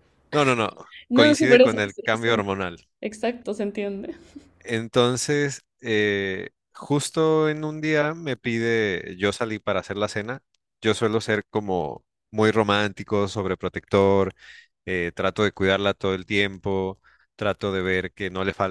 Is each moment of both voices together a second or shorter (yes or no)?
no